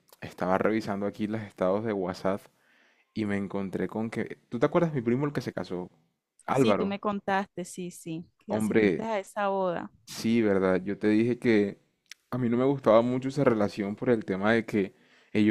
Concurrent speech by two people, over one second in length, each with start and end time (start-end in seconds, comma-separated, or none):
none